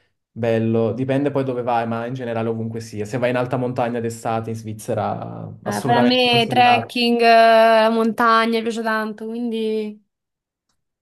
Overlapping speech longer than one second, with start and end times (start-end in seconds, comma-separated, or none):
5.7-7.0